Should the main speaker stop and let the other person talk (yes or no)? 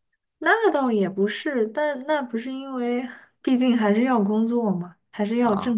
no